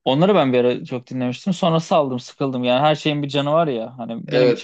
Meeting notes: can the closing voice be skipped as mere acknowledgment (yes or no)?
yes